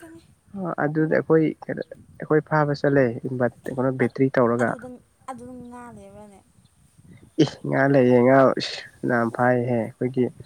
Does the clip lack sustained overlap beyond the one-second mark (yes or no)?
yes